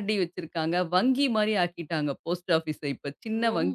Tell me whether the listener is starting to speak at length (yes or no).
yes